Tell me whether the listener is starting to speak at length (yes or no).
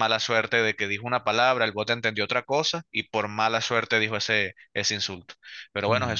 no